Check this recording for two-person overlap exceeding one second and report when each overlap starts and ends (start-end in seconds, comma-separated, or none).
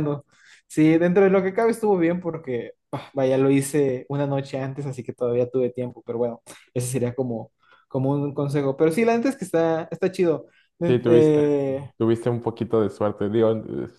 none